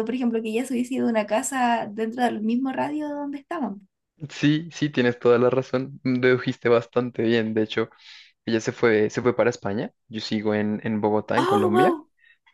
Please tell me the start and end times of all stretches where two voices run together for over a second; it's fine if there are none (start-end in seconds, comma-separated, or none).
none